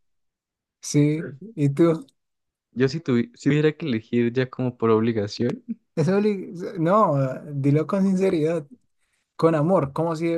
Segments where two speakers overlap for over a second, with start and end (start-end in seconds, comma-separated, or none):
none